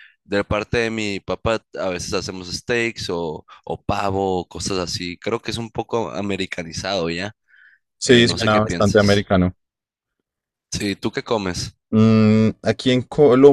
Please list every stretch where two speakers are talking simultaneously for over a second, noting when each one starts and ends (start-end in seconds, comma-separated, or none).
8.1-9.3